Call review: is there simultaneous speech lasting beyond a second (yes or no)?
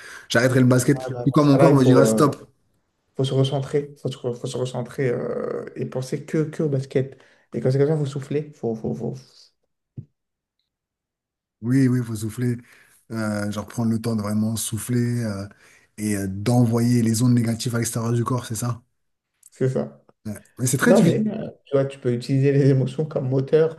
yes